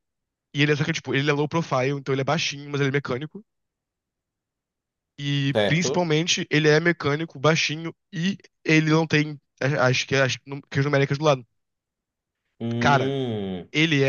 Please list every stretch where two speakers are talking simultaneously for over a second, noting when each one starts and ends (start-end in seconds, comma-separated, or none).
none